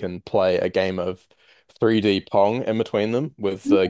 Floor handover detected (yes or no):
no